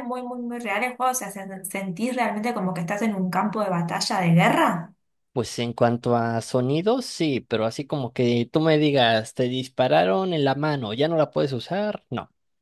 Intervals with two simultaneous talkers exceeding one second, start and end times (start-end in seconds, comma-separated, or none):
none